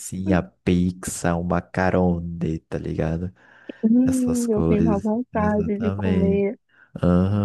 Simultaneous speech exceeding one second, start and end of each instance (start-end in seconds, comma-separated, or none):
4.0-6.4